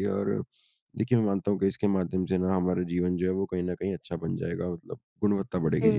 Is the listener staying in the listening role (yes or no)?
no